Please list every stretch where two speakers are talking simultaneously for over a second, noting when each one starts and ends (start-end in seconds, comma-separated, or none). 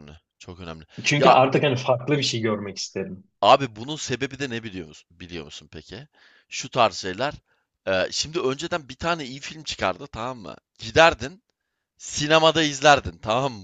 none